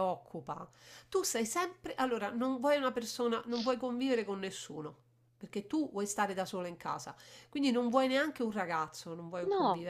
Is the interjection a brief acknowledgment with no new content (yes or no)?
yes